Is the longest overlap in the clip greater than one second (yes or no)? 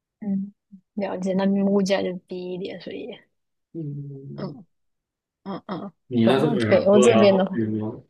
yes